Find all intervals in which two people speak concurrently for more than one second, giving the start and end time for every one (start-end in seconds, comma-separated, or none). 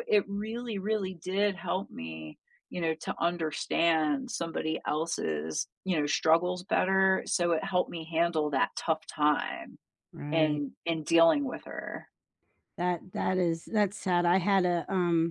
none